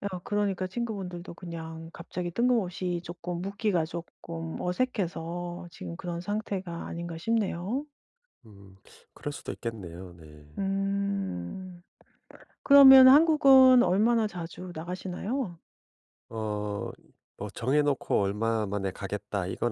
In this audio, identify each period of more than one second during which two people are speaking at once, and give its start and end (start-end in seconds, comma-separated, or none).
none